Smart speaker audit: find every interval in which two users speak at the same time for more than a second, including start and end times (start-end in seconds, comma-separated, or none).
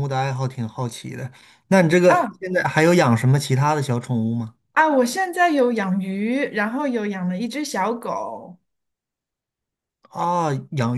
none